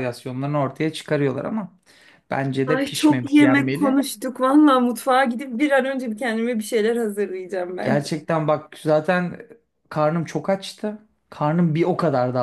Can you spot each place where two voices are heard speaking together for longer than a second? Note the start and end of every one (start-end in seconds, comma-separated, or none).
2.7-4.0